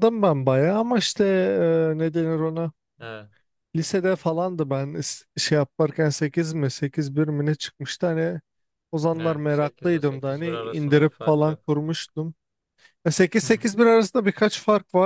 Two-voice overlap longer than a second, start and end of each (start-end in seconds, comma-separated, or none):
9.2-11.6